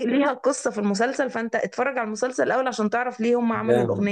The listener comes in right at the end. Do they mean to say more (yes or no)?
yes